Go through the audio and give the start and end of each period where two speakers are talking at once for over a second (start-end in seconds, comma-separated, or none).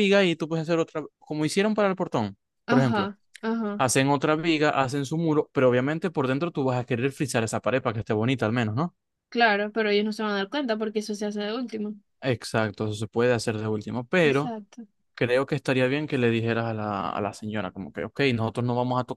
none